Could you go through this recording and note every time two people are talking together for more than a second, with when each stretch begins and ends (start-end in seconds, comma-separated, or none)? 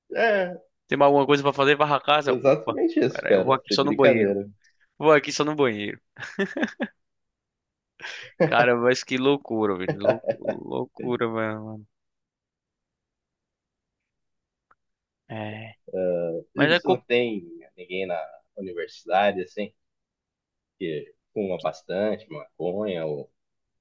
2.3-4.4